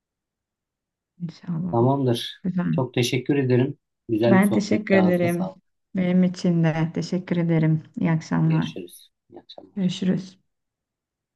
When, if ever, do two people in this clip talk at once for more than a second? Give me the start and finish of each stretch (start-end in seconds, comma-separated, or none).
4.3-5.5